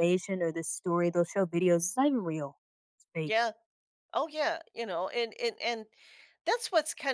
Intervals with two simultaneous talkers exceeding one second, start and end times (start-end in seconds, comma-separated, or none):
none